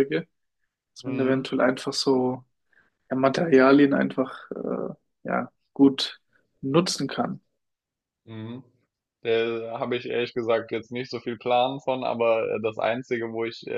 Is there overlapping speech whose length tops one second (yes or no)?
no